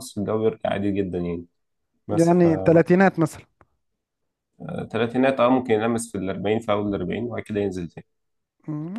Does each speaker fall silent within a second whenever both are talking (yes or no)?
yes